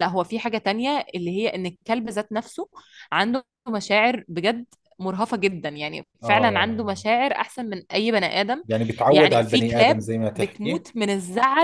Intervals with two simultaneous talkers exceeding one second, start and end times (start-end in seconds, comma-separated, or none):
9.1-10.9